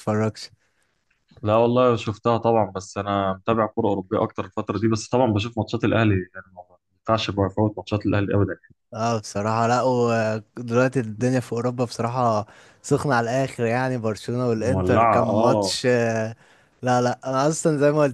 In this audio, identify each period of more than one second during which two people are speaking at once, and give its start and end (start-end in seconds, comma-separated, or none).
14.6-15.8